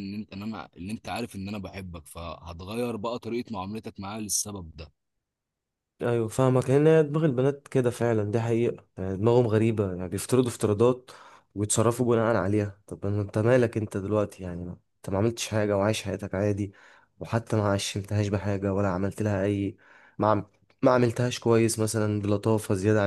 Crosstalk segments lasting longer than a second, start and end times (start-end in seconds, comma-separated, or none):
none